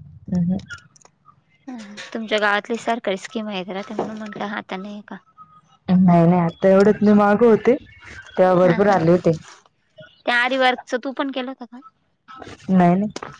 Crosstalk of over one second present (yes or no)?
no